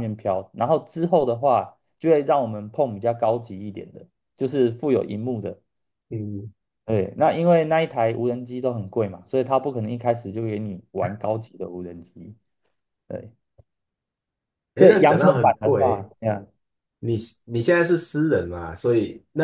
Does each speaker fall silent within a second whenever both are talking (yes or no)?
no